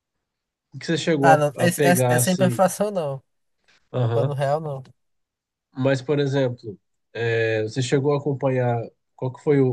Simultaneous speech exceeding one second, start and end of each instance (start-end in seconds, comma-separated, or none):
1.2-2.6